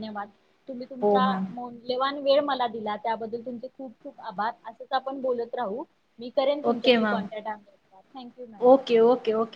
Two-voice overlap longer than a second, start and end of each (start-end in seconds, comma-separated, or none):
none